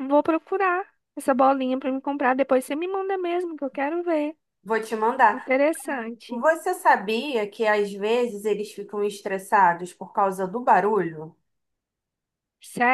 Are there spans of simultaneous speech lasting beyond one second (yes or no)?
no